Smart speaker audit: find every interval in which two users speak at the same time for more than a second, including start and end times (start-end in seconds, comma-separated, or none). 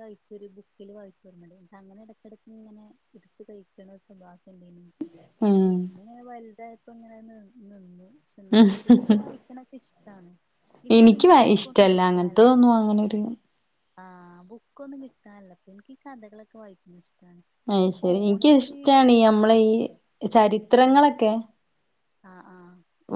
10.9-12.6